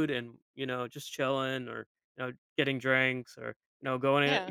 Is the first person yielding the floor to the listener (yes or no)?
no